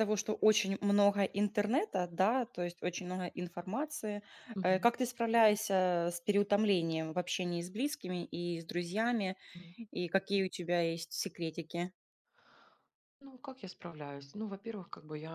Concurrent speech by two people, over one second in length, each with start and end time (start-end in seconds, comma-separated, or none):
none